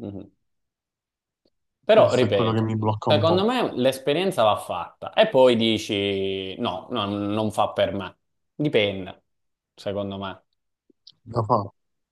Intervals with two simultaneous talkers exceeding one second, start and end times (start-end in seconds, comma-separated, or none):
1.9-3.5